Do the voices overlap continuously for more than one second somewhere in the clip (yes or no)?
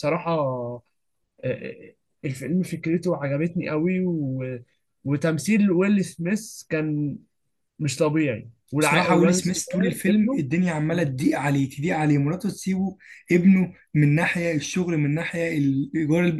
yes